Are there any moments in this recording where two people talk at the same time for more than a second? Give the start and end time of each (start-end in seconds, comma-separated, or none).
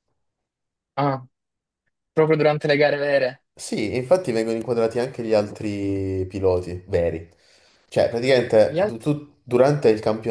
none